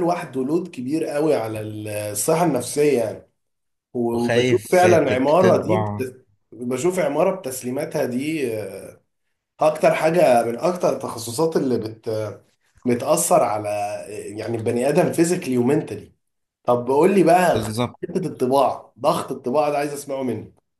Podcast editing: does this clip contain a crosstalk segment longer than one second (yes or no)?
yes